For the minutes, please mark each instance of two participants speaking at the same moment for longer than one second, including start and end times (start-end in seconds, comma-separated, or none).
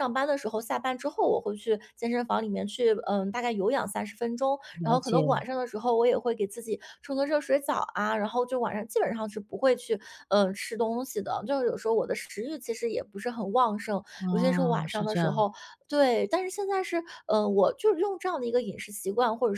14.2-15.5